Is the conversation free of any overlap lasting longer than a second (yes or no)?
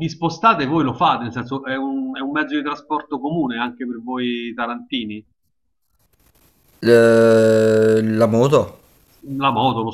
yes